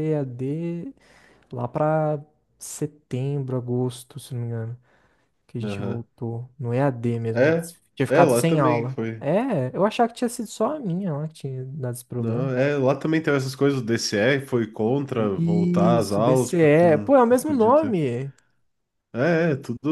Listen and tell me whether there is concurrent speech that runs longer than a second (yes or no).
yes